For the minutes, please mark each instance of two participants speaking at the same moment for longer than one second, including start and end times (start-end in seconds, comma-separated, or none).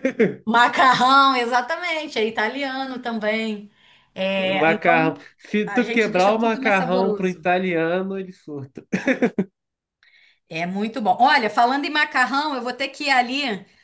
5.7-7.5